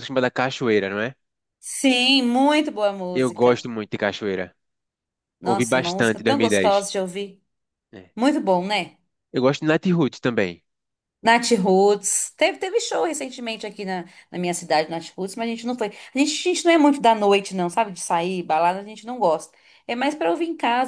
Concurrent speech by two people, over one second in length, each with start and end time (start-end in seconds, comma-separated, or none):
5.4-6.9